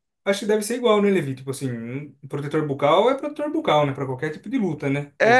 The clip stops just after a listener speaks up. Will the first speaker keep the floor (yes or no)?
no